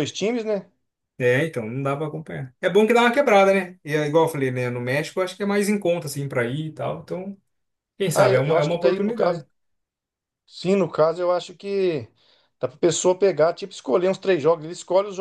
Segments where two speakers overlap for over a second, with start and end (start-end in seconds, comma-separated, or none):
8.1-9.4